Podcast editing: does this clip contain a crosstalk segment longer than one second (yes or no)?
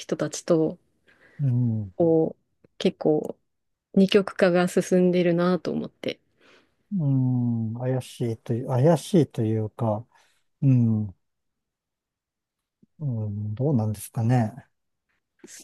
no